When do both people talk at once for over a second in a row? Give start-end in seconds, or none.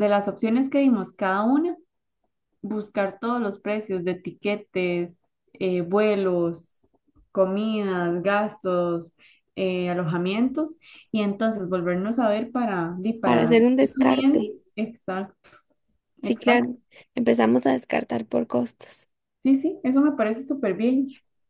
13.2-14.6